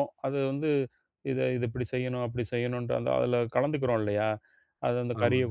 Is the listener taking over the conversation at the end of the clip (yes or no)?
no